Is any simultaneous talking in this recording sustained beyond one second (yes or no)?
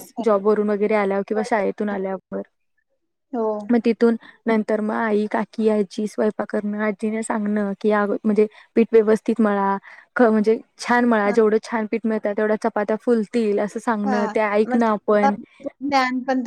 no